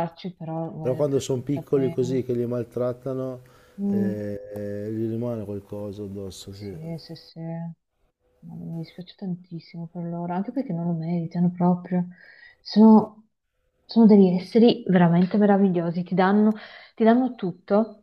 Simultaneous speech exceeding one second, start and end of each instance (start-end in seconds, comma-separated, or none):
0.8-2.2